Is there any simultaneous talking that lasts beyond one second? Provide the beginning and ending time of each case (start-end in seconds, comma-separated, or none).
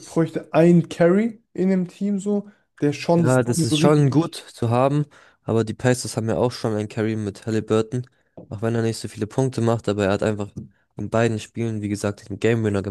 3.2-4.4